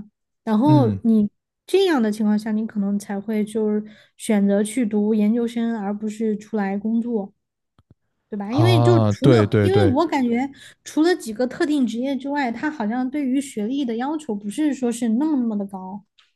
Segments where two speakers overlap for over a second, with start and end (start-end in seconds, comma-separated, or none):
8.5-9.9